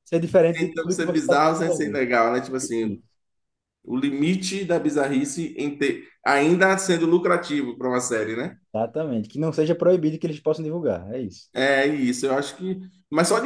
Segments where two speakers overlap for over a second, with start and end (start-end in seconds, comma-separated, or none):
0.5-2.0